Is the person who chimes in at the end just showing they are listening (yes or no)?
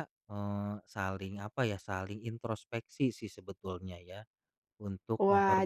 no